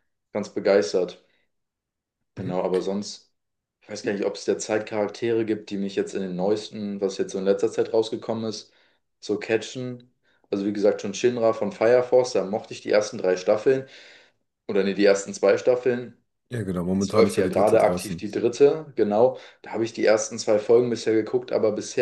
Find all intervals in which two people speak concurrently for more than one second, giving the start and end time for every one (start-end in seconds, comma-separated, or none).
17.0-18.3